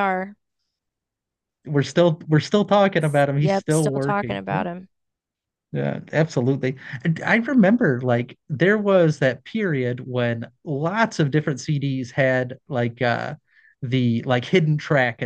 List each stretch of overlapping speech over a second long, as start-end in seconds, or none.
3.4-4.6